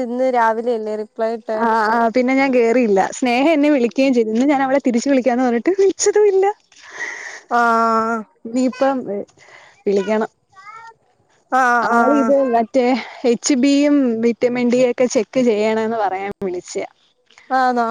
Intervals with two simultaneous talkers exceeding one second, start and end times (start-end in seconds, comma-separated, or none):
none